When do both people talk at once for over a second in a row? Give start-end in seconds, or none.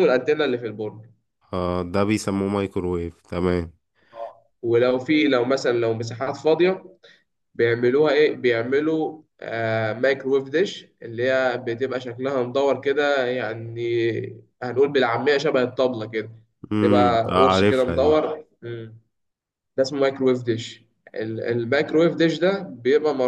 16.8-18.2